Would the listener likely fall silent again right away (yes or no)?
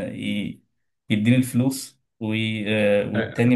yes